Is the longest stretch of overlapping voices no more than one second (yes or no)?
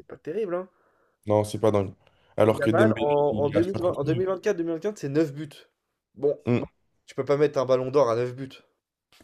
no